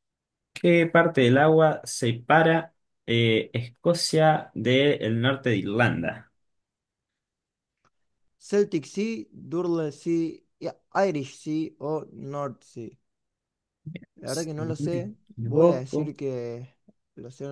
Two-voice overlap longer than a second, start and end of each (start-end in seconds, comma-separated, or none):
14.2-16.1